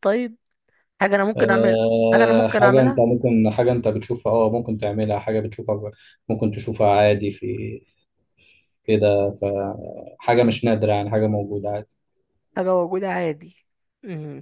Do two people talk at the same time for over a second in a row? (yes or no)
yes